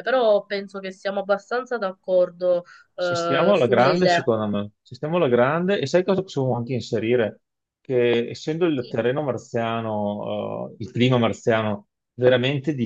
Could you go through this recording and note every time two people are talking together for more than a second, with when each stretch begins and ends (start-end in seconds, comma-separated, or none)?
3.0-4.3